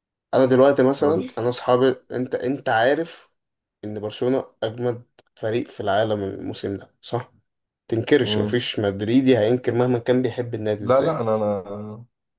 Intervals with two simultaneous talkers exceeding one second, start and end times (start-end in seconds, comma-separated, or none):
none